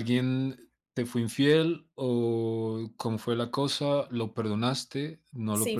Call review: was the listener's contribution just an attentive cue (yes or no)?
no